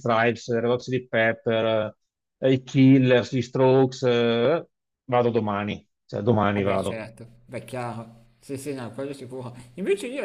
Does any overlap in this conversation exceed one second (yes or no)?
no